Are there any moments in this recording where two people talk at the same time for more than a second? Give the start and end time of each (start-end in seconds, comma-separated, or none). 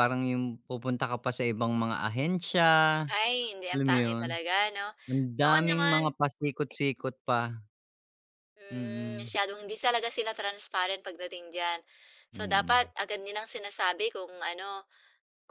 none